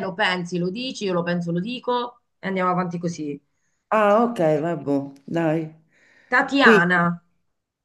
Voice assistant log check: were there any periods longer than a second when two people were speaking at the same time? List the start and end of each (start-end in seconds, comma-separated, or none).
none